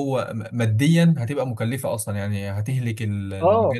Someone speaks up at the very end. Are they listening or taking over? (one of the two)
listening